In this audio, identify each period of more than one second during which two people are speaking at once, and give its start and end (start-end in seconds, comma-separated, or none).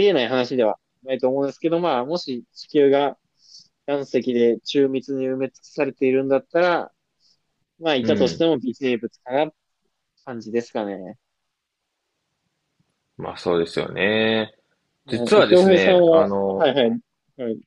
15.1-16.7